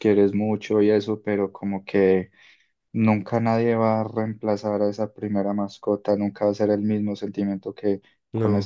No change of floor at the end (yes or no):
yes